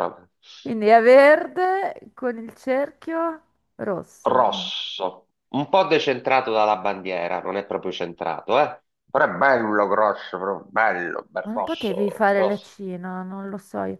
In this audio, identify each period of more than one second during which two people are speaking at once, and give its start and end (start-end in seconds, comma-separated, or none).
11.4-12.7